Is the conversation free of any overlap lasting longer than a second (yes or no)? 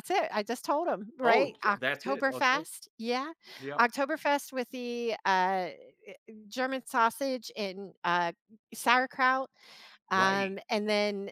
no